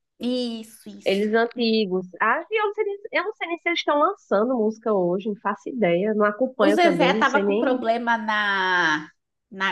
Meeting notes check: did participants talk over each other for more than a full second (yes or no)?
yes